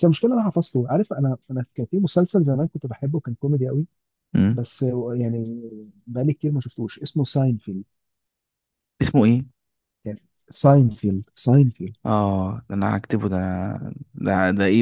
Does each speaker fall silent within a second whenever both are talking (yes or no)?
yes